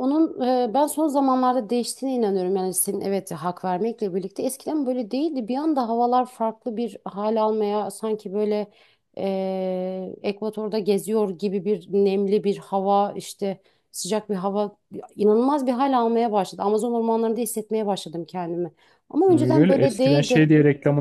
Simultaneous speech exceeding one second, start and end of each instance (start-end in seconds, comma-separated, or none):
19.3-20.5